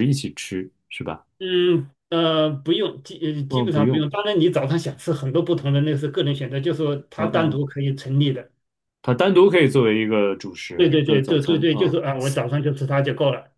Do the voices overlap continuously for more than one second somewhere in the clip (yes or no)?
yes